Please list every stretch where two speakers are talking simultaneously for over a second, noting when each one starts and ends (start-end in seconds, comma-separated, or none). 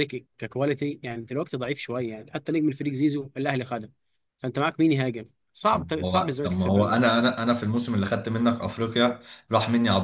5.7-7.2